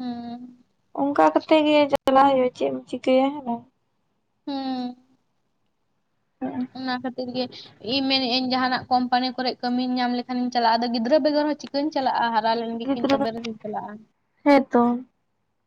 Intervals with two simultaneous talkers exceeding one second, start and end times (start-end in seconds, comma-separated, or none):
none